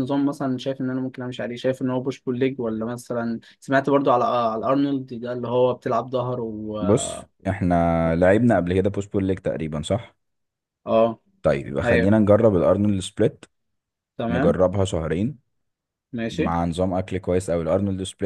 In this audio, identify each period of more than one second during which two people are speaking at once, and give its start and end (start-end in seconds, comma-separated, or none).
none